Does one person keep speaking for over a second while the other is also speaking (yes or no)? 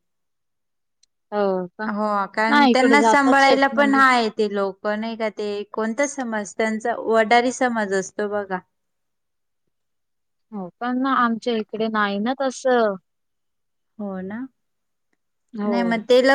yes